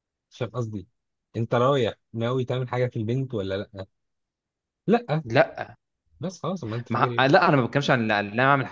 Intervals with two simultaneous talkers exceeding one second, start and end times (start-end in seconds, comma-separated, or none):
none